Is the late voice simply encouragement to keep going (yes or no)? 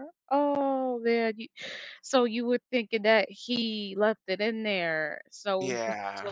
yes